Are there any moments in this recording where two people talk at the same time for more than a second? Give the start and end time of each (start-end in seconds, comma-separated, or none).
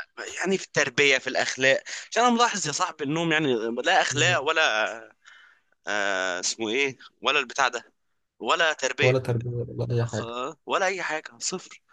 none